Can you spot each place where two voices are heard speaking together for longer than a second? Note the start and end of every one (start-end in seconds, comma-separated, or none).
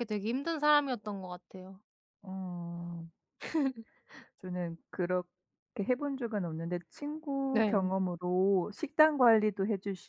none